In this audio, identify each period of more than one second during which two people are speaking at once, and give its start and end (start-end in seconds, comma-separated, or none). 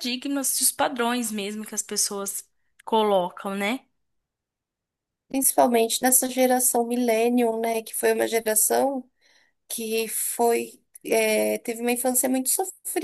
none